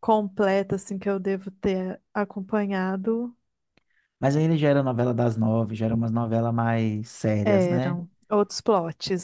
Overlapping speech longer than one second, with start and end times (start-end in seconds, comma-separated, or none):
none